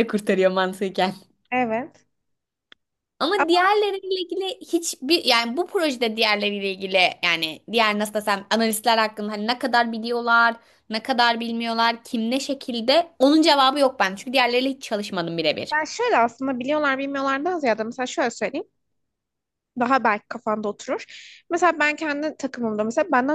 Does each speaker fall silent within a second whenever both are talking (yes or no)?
yes